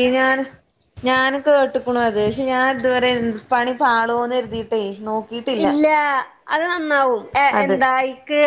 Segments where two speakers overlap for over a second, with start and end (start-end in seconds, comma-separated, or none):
none